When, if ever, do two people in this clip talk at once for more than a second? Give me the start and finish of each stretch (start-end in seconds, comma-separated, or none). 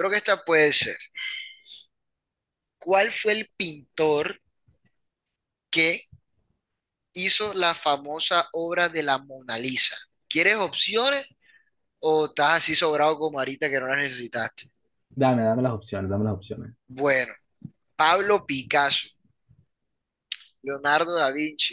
none